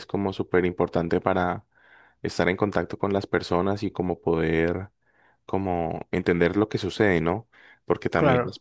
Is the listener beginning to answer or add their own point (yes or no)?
no